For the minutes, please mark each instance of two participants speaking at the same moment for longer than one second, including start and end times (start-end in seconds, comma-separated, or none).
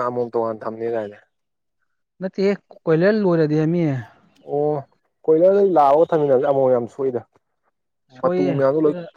none